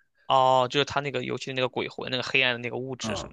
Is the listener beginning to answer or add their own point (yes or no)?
yes